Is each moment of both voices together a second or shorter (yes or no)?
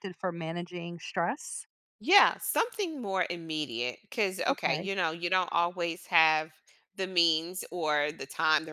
yes